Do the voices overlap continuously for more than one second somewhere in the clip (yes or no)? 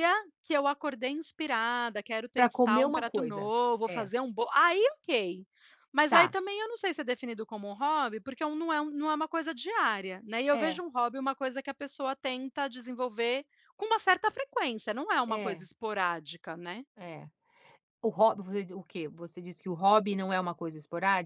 yes